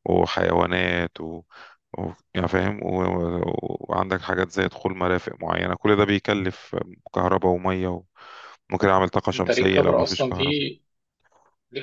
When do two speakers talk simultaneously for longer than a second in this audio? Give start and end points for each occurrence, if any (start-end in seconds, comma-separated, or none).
9.3-10.7